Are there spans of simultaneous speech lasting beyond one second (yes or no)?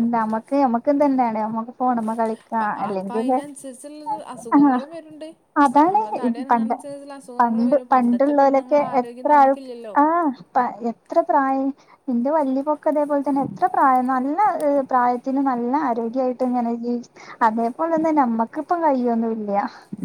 yes